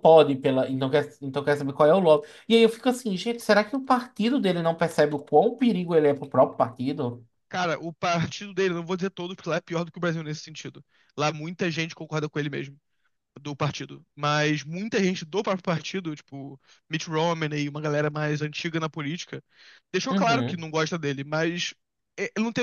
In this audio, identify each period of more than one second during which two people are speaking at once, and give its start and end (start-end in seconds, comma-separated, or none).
none